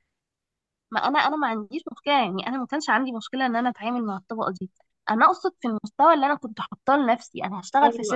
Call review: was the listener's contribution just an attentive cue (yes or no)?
yes